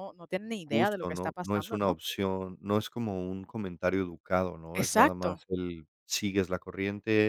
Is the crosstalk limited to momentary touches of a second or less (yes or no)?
no